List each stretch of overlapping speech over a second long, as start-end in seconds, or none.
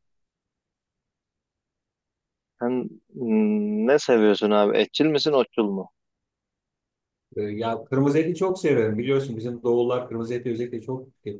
none